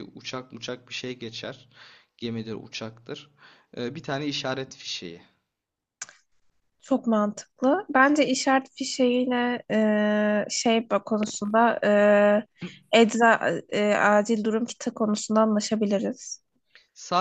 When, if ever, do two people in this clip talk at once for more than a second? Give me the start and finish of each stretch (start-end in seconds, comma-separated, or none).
none